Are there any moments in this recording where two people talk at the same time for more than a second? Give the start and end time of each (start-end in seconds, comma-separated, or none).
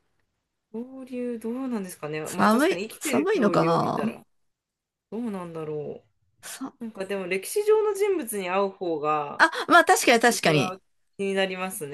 2.2-4.2